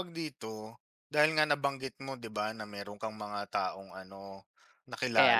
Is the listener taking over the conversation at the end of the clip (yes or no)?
no